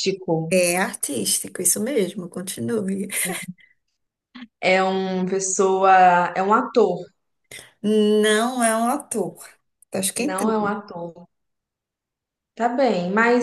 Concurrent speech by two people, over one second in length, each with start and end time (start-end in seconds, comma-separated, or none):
none